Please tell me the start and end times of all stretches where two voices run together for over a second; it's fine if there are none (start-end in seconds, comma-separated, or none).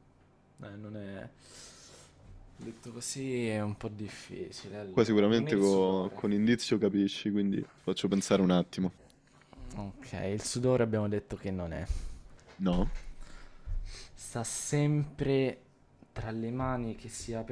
4.9-6.3